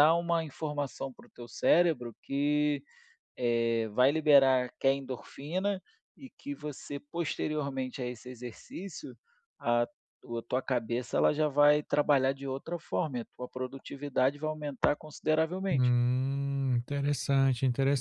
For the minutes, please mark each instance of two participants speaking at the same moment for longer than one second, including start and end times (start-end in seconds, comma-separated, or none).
none